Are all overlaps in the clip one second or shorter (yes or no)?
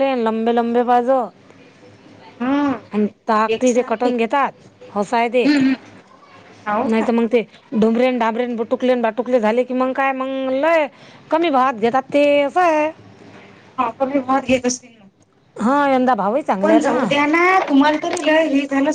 yes